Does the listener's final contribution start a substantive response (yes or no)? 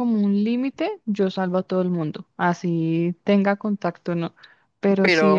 yes